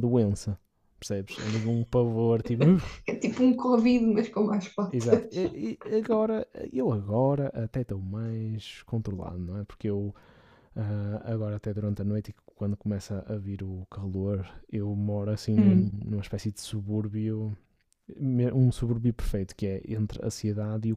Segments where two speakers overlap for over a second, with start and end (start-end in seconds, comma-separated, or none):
none